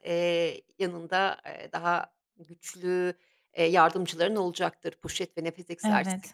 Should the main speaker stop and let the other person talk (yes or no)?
yes